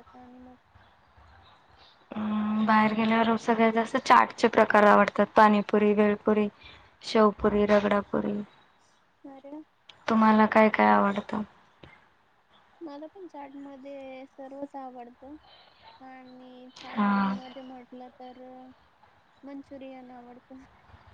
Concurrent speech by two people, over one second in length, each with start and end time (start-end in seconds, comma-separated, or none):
none